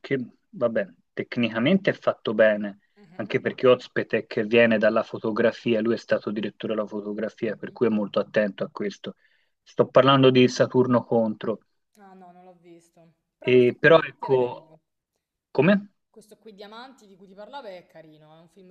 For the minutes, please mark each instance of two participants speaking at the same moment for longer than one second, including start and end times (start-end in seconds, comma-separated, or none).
13.4-14.7